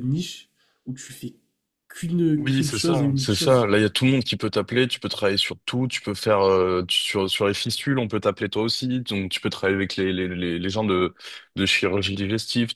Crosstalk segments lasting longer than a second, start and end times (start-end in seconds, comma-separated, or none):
2.4-3.7